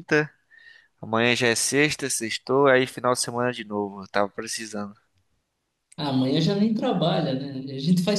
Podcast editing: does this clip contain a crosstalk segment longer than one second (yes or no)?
no